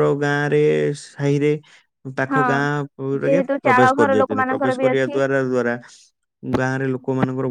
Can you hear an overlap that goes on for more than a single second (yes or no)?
yes